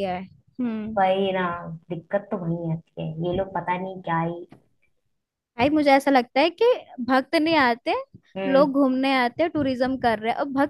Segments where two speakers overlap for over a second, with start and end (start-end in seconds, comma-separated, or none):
none